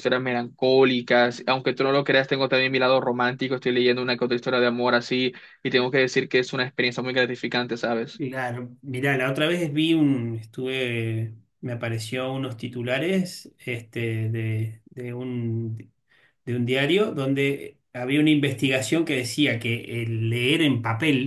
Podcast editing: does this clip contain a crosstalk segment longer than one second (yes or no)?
no